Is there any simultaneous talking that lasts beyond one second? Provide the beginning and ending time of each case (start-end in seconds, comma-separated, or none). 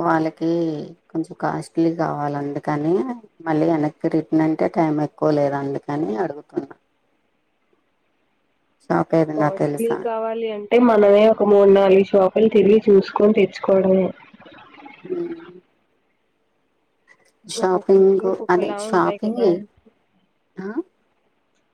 17.6-19.4